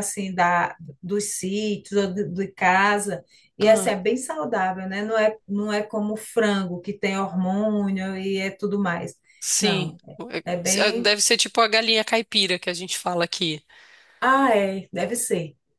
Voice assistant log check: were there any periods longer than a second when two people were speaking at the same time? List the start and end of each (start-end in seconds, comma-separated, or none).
none